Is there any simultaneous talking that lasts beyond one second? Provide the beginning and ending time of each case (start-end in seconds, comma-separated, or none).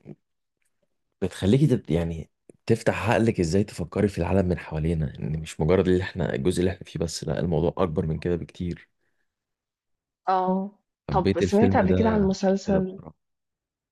11.1-13.0